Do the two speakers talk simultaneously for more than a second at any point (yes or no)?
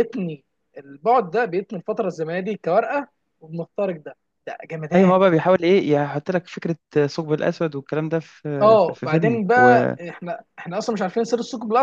yes